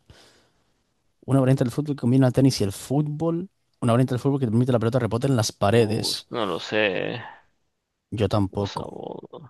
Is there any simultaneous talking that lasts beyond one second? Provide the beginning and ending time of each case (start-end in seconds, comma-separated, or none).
none